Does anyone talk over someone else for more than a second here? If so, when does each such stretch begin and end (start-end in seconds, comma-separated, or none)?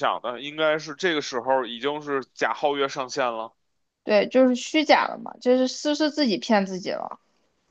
none